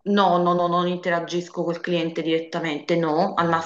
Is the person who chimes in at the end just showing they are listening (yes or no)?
yes